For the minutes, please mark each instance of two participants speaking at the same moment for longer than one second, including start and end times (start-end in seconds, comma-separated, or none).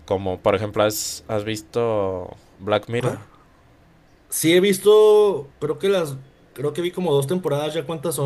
none